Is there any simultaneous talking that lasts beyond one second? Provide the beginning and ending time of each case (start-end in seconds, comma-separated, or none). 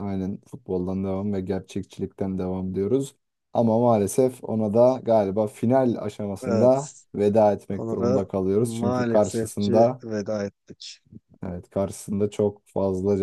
7.8-10.0